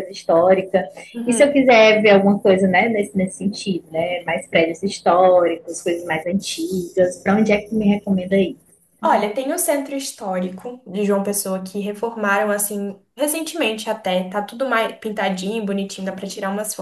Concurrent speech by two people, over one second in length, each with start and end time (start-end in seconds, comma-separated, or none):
none